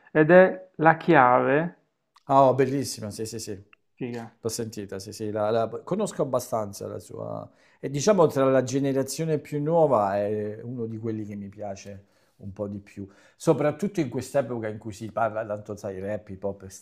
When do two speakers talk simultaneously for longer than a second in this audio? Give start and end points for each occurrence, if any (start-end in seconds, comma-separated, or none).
none